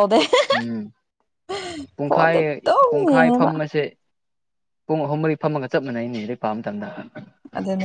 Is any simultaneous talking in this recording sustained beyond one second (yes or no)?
yes